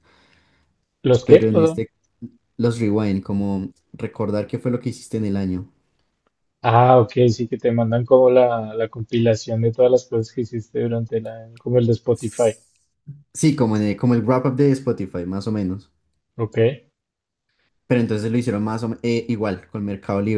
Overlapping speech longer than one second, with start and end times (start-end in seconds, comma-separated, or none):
none